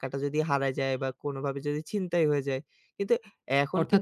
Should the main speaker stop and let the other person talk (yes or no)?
yes